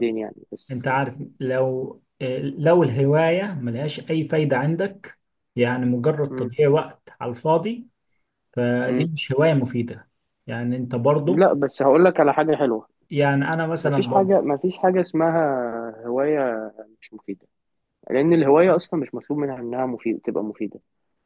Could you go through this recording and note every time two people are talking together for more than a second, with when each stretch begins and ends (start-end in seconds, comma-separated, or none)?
none